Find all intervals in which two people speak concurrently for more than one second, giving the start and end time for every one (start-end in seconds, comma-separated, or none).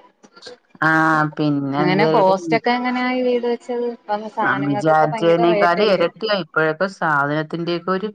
4.5-6.1